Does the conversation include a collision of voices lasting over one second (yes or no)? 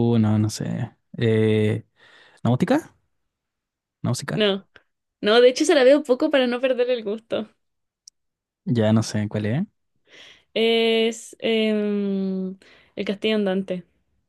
no